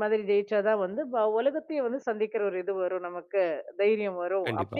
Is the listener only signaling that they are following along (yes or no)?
yes